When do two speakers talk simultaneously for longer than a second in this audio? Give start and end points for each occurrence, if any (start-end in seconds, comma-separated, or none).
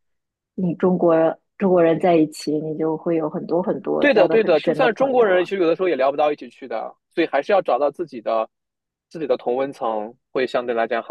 4.0-5.5